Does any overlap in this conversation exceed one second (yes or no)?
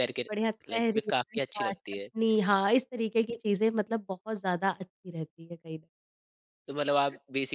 yes